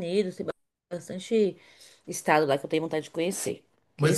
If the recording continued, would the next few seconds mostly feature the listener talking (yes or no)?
yes